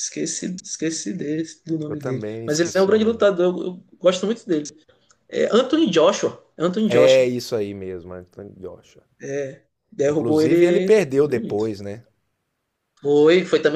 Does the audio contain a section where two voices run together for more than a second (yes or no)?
yes